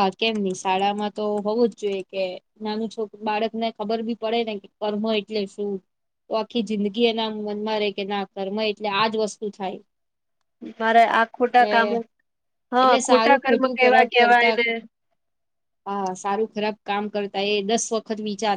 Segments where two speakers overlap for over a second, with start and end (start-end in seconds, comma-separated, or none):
12.8-14.5